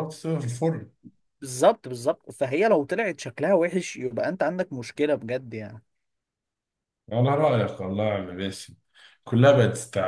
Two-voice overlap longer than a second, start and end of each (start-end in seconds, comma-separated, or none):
none